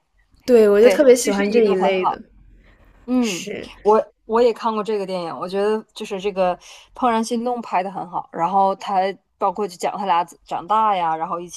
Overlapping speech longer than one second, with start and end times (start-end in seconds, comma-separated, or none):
0.8-2.2